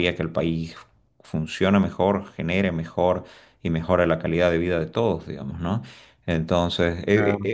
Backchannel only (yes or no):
yes